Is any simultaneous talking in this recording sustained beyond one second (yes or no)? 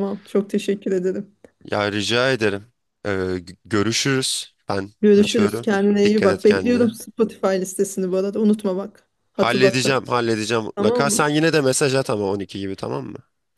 yes